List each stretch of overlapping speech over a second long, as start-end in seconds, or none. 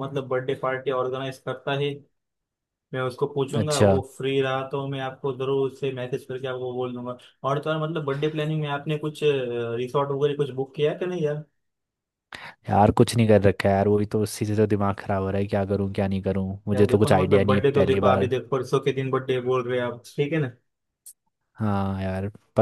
16.7-18.3